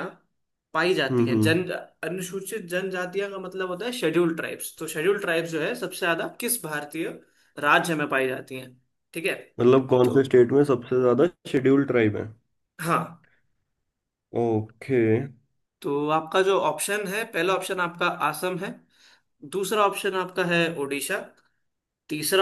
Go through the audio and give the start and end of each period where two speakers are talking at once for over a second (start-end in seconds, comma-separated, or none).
none